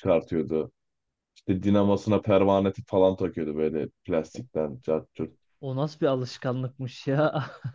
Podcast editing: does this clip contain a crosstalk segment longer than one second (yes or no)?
no